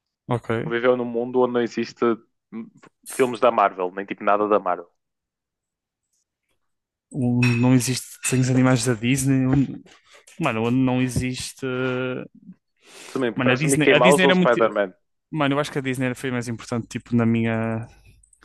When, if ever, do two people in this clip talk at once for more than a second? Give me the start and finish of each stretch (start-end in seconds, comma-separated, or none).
13.3-14.6